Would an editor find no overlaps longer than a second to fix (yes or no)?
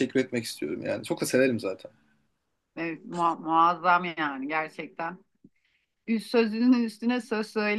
yes